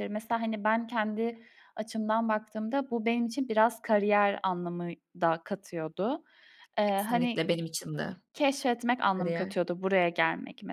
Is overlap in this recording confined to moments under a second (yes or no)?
yes